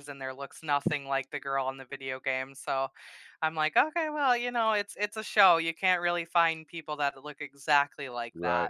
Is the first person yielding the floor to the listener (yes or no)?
yes